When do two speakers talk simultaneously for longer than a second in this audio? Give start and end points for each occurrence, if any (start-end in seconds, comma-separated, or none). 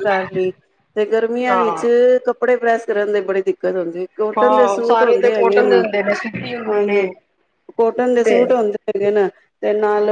4.4-5.8